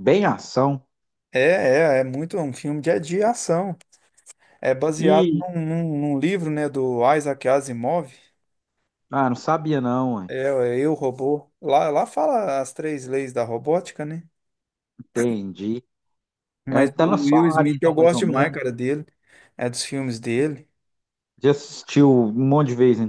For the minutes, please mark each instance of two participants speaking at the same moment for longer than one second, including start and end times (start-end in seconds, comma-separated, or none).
16.7-18.6